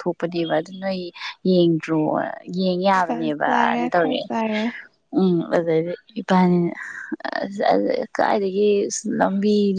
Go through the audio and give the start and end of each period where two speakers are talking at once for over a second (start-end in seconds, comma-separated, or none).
3.1-4.3